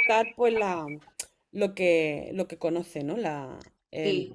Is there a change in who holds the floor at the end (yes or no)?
yes